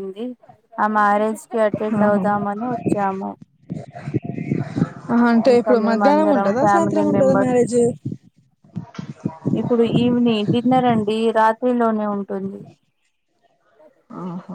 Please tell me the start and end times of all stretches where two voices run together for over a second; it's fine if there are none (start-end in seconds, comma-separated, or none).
5.5-7.6